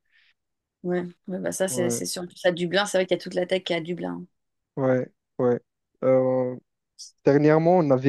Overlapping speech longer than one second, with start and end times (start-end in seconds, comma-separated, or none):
none